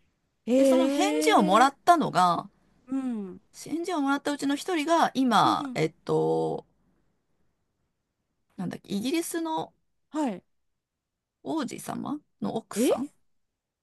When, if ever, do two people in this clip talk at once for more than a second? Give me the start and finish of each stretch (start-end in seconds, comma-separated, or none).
0.5-1.7